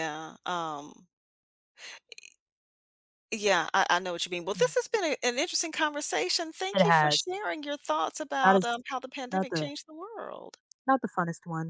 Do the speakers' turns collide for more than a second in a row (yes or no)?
no